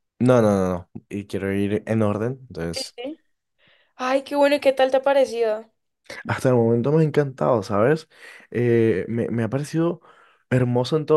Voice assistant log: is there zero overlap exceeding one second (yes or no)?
yes